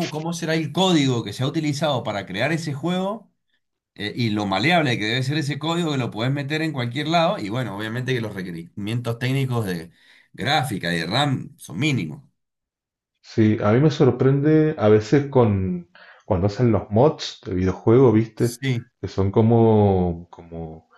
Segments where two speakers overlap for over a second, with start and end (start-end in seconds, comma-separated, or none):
none